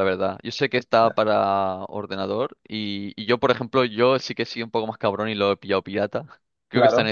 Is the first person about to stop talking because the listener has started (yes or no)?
no